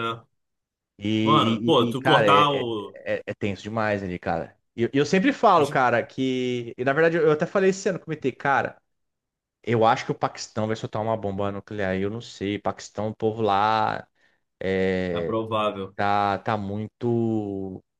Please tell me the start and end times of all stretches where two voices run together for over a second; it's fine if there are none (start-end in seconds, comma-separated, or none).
1.2-2.7